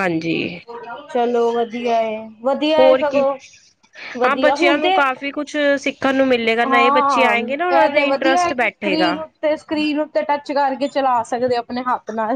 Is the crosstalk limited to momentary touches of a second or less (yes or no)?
no